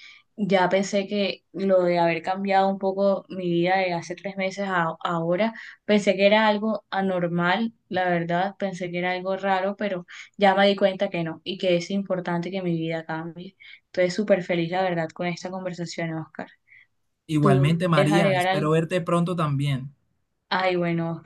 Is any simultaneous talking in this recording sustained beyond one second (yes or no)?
yes